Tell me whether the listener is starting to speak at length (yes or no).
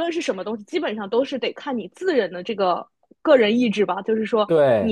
no